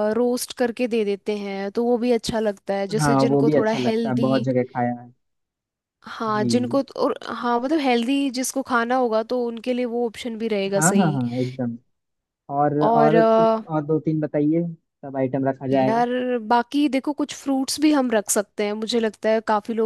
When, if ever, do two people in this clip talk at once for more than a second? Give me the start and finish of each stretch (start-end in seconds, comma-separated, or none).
3.0-4.5